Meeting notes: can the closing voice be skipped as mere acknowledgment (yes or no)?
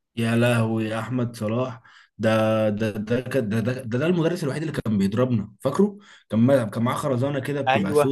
yes